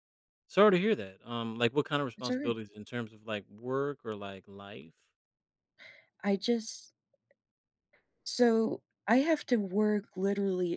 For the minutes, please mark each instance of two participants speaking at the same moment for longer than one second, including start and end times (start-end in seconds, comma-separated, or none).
none